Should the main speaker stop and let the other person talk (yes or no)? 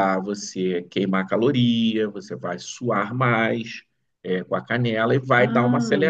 no